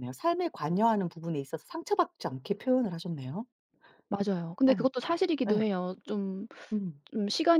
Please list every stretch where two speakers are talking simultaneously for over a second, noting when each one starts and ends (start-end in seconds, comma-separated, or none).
none